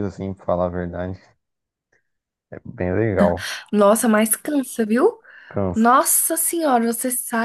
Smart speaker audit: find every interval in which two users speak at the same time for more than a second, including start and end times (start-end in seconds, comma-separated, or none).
none